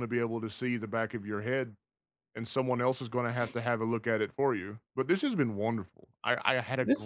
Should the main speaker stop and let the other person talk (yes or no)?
yes